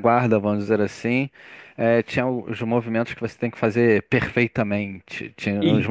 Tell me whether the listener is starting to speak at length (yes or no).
no